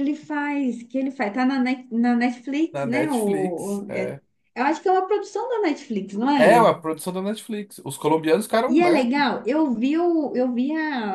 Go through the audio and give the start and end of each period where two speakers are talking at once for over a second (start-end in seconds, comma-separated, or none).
2.7-4.2